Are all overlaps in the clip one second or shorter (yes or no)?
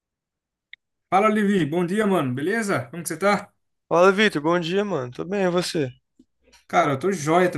yes